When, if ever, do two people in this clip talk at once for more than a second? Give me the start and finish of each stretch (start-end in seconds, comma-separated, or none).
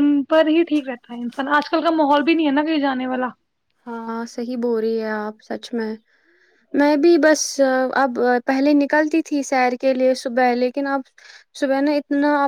none